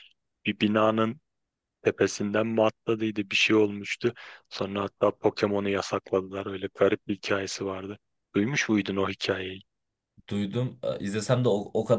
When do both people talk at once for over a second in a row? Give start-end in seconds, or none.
none